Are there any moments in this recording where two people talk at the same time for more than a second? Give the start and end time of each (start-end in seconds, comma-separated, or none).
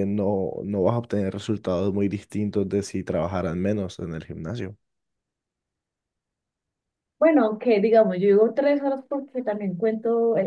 none